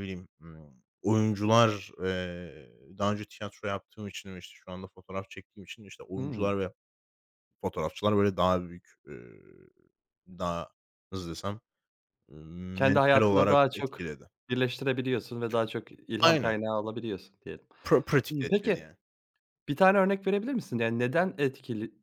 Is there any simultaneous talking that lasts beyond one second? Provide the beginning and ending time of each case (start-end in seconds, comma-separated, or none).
12.7-14.0